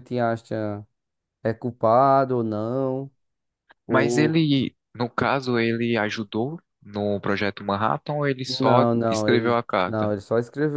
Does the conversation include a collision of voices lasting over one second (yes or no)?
yes